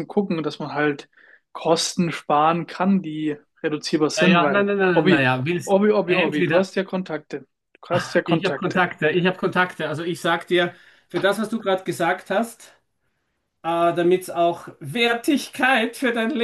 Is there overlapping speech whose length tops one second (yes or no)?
yes